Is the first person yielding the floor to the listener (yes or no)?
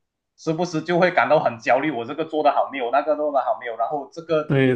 no